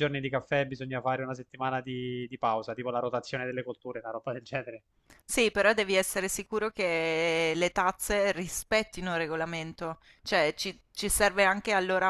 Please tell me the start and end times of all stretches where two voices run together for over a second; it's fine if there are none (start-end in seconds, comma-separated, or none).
none